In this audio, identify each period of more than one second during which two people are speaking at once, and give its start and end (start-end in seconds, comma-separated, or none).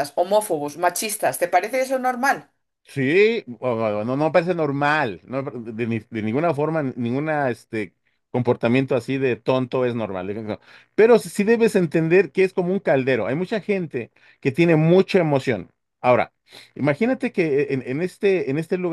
none